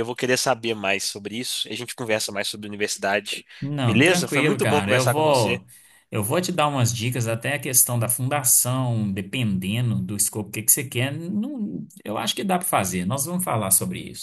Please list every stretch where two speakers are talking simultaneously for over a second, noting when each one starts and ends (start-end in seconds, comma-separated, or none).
3.8-5.6